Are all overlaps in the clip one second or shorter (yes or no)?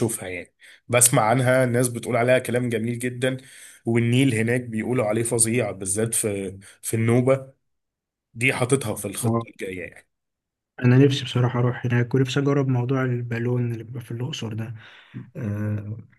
yes